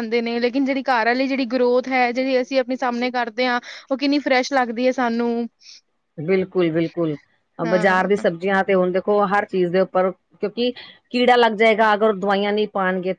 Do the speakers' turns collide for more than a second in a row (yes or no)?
no